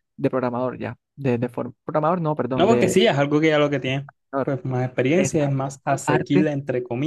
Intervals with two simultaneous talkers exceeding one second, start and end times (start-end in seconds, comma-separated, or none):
5.2-6.5